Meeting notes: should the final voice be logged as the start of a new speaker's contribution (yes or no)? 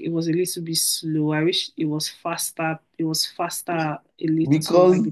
yes